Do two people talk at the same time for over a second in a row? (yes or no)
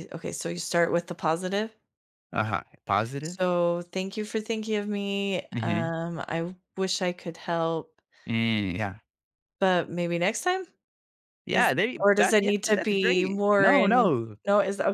yes